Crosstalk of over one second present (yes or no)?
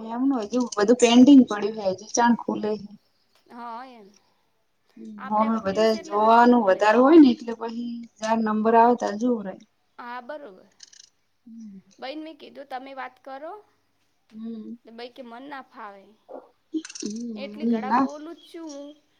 yes